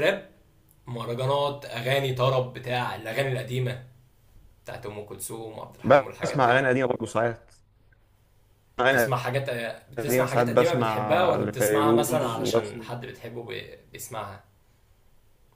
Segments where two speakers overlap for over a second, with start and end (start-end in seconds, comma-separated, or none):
10.0-12.9